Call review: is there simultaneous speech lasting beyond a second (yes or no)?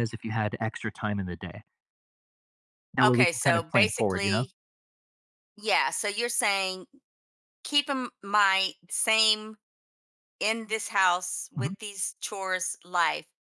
yes